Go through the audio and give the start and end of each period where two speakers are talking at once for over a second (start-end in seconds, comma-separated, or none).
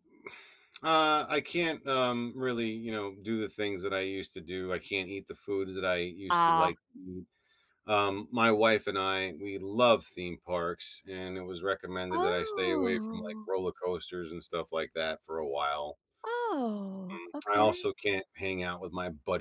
12.1-13.5